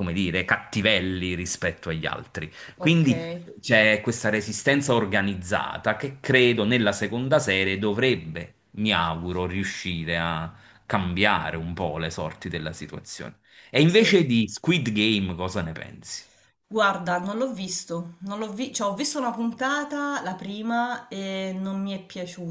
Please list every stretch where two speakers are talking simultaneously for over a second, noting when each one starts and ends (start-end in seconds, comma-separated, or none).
none